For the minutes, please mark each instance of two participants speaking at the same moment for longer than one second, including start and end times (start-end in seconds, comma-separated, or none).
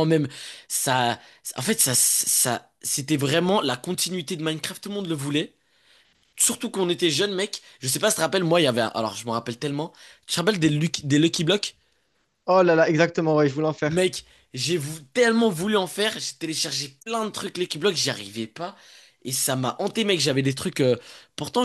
none